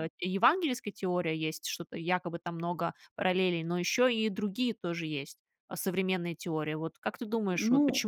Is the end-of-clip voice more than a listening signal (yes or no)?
no